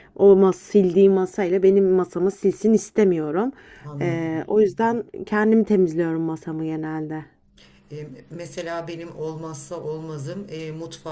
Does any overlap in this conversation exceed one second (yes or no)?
no